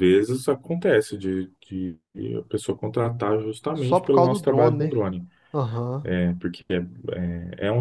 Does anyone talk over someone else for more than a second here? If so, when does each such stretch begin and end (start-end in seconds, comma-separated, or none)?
3.8-5.0